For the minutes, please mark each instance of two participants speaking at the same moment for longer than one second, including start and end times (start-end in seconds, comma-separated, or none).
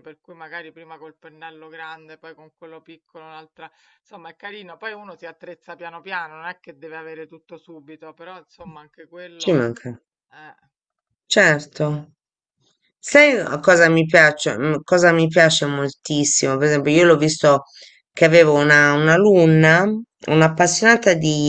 none